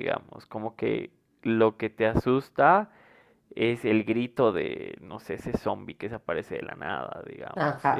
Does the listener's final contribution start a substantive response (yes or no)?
yes